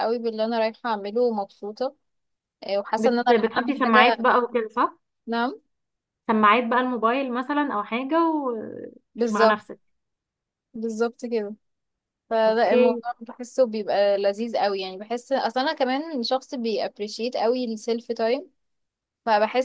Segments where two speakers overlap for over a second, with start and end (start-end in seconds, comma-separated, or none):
3.0-4.3